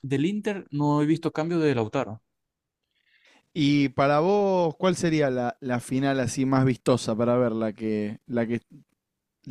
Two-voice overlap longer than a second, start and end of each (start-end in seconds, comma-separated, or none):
none